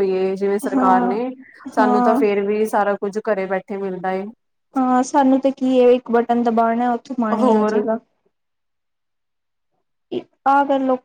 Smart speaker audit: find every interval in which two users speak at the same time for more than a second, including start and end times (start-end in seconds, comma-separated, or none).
none